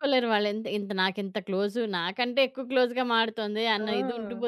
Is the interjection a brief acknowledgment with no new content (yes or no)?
no